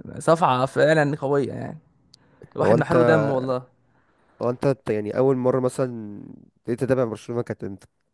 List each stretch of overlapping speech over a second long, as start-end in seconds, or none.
none